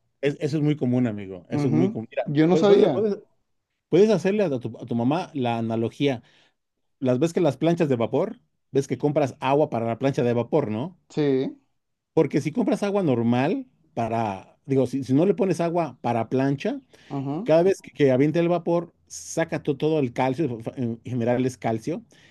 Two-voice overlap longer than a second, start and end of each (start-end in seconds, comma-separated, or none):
1.5-3.1